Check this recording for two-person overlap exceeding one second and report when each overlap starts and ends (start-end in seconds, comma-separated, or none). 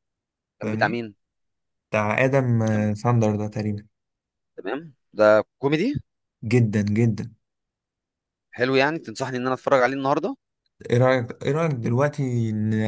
none